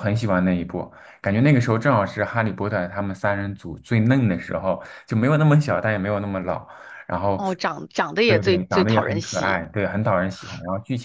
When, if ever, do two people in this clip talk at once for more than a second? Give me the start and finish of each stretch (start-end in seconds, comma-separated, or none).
8.3-9.6